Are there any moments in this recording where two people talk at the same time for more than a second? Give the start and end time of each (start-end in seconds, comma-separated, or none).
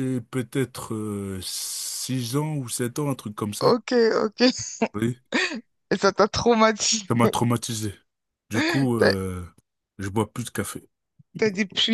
none